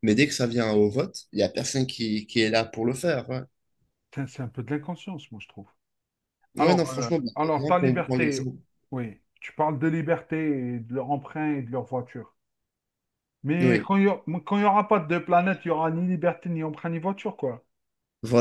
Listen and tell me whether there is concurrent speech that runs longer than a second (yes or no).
yes